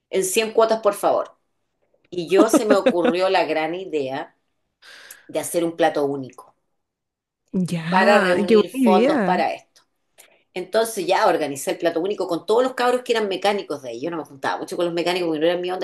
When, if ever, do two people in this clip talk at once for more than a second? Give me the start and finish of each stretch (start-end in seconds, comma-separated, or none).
7.9-9.5